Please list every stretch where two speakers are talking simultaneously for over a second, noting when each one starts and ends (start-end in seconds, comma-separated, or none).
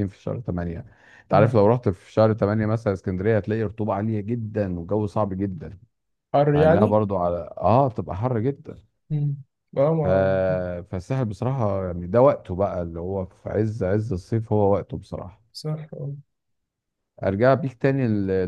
none